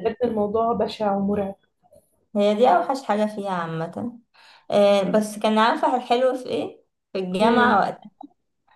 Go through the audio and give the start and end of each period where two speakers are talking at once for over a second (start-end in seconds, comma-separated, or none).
none